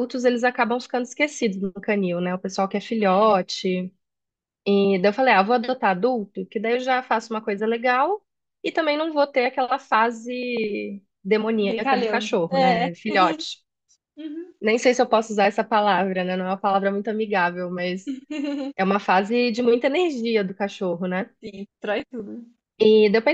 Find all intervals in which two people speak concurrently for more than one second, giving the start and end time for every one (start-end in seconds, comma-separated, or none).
11.6-12.9